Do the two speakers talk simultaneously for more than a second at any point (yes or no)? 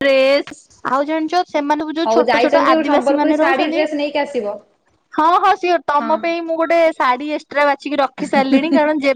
yes